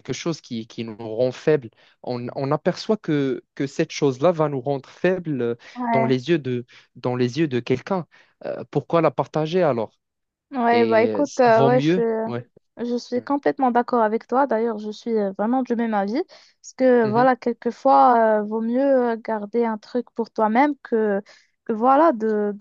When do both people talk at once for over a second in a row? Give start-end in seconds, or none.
10.7-12.3